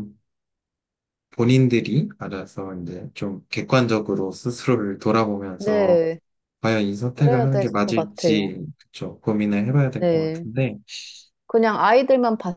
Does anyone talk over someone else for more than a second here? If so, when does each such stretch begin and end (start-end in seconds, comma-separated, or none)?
7.2-8.5